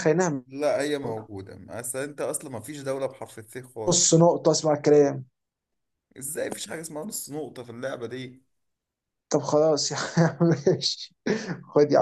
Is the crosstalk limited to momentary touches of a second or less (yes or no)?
yes